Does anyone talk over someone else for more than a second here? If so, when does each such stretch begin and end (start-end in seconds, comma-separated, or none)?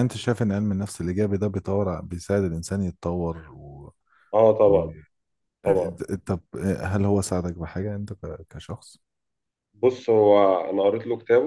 none